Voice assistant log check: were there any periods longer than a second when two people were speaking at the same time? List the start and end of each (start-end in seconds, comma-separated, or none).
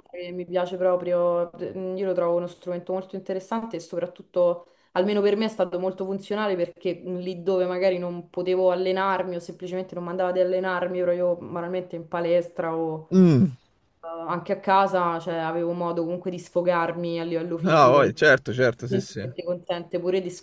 none